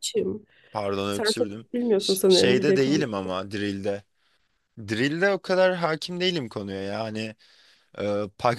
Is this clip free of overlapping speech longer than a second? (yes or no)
no